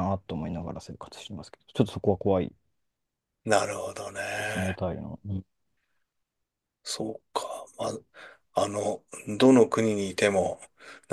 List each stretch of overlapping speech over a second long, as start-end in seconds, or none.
none